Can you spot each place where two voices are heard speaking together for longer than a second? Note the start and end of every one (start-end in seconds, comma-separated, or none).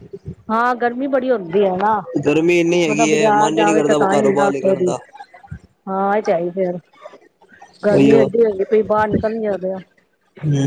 2.9-4.9